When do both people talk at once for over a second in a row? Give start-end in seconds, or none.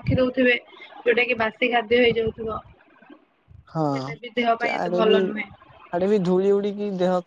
3.7-5.2